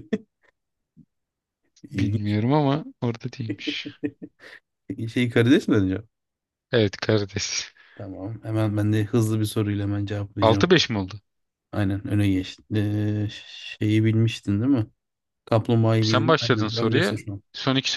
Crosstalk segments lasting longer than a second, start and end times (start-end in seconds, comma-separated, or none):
16.0-17.4